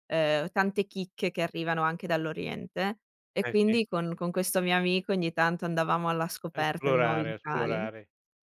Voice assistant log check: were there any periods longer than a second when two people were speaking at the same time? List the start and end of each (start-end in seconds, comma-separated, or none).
6.5-7.9